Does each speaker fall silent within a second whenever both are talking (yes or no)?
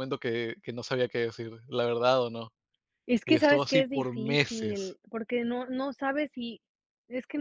no